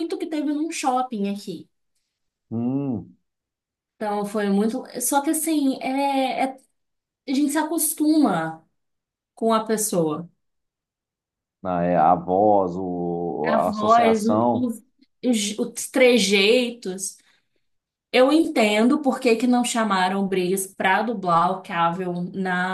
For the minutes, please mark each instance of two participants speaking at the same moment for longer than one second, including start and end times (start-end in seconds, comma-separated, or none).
13.5-14.7